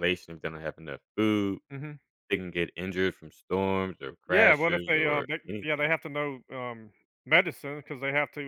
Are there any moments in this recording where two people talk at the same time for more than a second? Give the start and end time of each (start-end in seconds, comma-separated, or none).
4.3-5.9